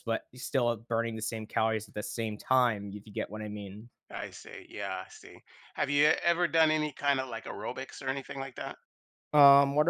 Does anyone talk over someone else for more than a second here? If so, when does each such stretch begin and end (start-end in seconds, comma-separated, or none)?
none